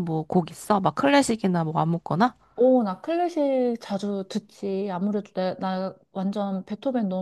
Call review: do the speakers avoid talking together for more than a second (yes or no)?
yes